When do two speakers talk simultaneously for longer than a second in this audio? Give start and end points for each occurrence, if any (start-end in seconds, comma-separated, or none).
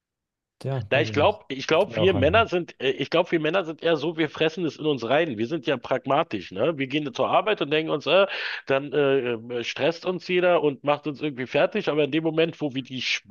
0.9-2.5